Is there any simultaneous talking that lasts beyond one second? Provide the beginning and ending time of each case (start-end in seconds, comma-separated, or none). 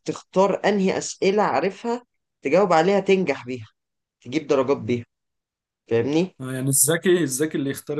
none